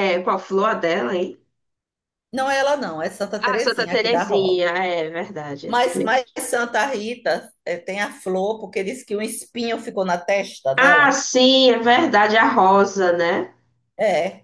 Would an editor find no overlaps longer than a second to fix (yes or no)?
no